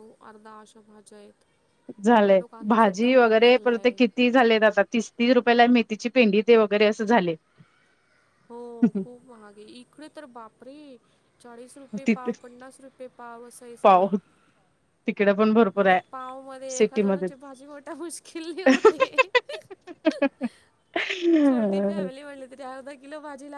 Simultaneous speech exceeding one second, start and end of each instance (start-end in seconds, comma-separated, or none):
2.1-4.0